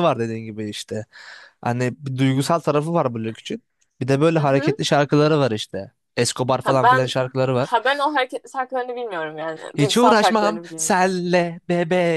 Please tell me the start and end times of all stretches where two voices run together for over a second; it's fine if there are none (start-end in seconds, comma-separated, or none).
9.8-11.0